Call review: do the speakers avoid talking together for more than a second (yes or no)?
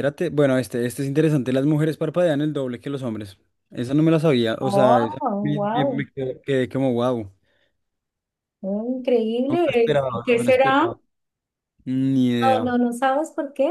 no